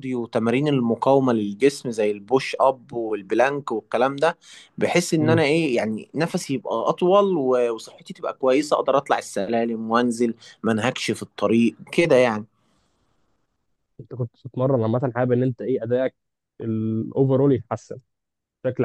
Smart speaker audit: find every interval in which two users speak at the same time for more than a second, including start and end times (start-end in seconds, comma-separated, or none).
none